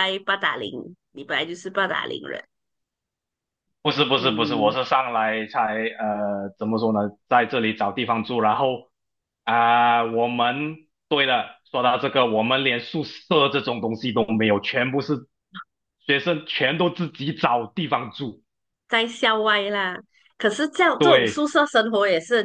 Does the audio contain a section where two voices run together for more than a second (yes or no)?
no